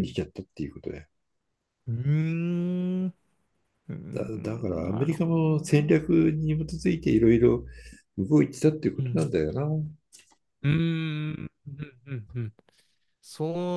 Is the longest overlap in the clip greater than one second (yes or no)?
yes